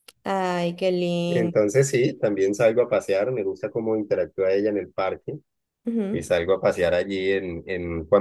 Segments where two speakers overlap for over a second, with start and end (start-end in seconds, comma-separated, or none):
none